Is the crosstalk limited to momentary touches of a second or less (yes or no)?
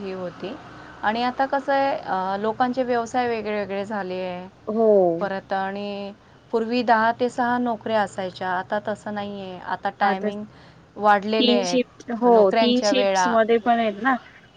no